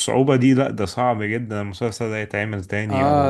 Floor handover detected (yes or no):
yes